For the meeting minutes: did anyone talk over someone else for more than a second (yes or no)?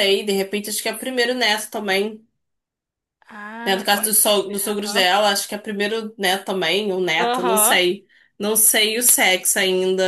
yes